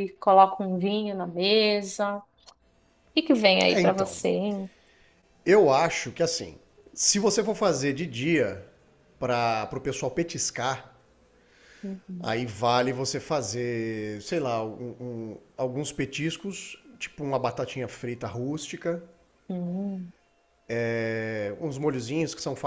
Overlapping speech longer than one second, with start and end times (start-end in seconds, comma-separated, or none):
none